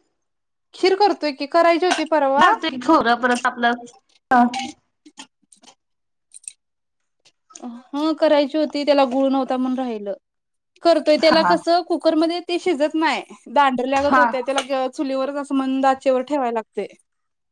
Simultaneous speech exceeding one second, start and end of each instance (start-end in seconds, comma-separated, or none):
none